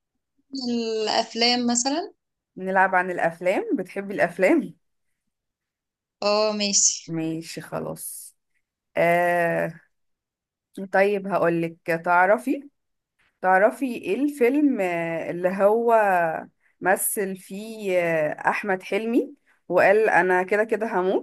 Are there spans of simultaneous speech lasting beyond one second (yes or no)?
no